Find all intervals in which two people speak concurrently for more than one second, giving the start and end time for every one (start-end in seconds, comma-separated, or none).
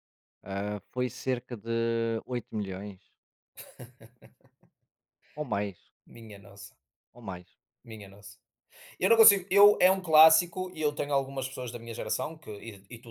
none